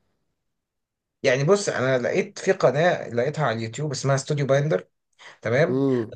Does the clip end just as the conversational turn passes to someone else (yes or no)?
no